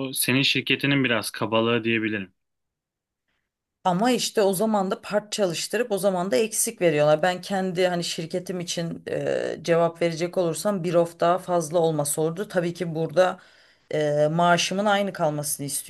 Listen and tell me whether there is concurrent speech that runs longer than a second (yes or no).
no